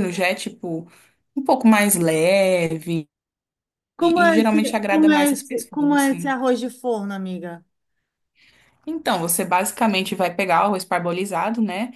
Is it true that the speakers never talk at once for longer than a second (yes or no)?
no